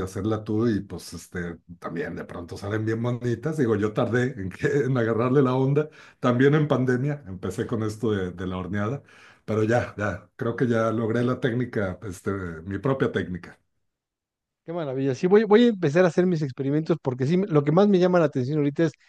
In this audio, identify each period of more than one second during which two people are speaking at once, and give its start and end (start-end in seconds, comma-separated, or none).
none